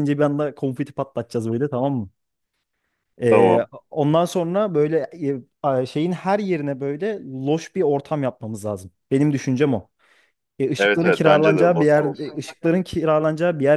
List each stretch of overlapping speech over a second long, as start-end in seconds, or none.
10.8-12.4